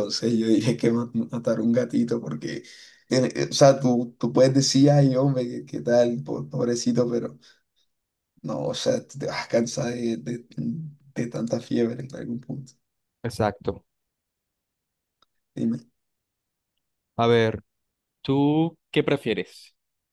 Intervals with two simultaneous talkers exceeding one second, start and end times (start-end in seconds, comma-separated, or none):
none